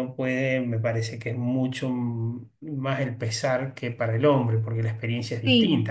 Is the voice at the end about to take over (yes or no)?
yes